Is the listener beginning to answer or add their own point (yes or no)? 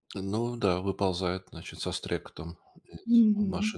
yes